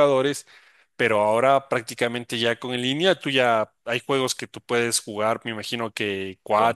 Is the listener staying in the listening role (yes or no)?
yes